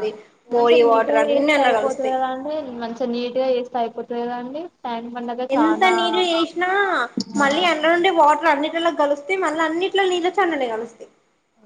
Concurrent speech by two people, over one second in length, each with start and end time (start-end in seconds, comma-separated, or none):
0.6-2.1